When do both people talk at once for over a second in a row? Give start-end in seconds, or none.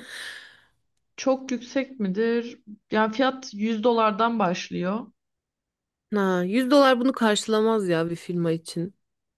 none